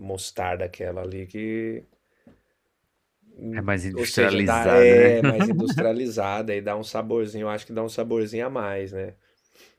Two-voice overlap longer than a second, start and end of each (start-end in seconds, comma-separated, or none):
3.5-5.2